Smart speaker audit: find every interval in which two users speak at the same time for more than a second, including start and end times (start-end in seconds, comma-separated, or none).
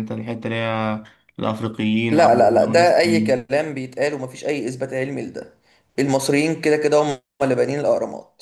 2.1-3.5